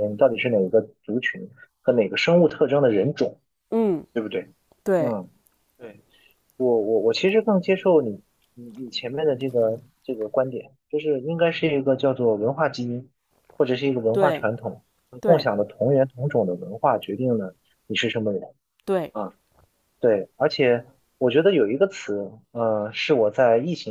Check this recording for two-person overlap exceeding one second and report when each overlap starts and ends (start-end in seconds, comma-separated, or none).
none